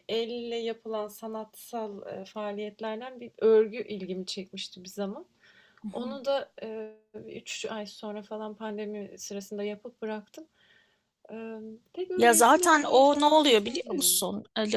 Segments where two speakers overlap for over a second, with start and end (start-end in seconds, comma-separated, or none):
12.2-14.2